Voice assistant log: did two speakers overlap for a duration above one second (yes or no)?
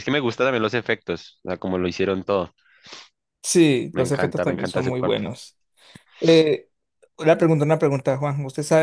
yes